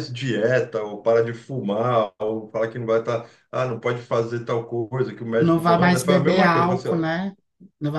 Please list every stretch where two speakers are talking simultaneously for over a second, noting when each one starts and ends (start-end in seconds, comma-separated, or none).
5.4-7.1